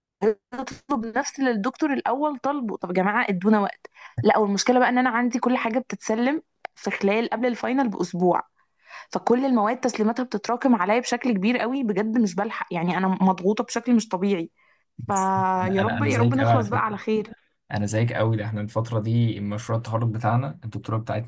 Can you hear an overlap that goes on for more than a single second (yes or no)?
yes